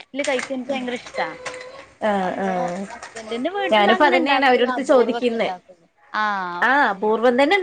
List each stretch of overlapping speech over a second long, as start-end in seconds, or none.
3.7-5.5